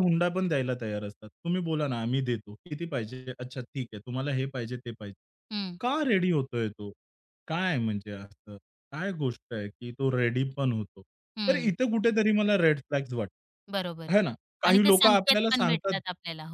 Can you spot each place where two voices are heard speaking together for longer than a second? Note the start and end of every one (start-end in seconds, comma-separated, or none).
14.7-16.0